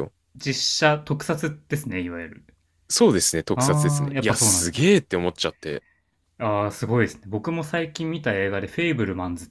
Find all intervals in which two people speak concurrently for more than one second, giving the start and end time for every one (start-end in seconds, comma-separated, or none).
3.5-4.9